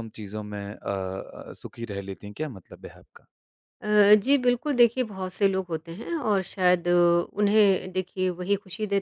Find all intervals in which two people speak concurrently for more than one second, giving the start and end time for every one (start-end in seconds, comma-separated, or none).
none